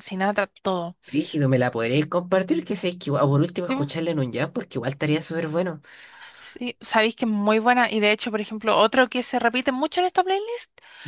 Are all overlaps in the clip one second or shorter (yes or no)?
yes